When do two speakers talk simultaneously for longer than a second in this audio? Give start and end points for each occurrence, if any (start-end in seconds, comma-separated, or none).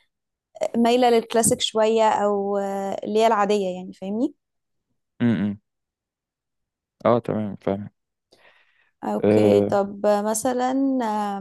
none